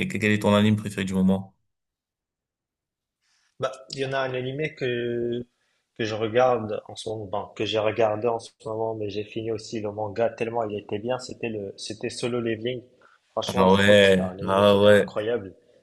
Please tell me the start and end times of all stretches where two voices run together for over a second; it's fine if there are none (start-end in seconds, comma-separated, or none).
13.5-15.1